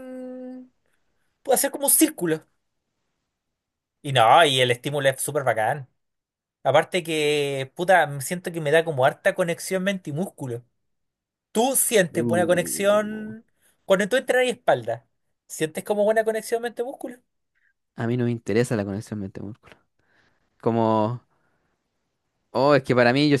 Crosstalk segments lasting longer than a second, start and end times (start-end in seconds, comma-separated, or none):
12.1-13.3